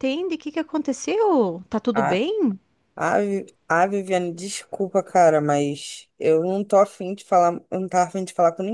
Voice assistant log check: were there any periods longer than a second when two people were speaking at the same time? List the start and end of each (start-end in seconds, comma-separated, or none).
none